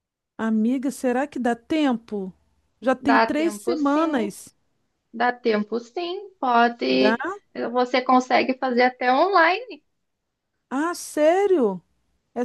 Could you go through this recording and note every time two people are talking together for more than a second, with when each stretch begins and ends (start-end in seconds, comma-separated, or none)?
3.0-4.3